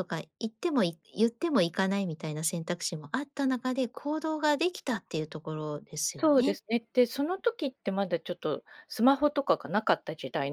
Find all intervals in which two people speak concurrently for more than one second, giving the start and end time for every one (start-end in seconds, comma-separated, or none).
none